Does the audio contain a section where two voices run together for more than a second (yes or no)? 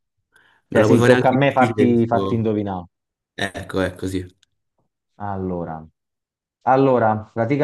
yes